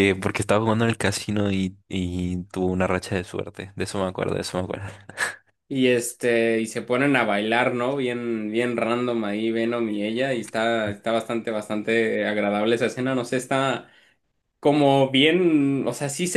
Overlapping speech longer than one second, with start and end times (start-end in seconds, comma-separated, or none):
none